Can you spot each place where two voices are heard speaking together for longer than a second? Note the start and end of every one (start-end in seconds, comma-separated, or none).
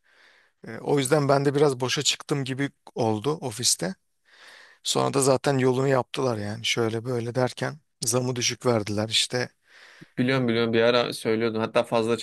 none